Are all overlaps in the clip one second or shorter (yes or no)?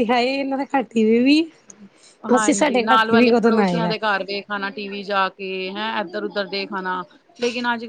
no